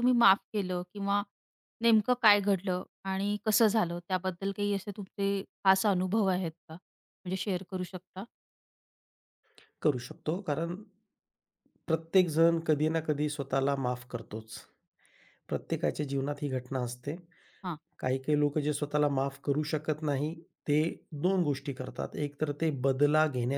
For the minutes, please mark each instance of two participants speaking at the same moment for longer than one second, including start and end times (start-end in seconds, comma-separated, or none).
none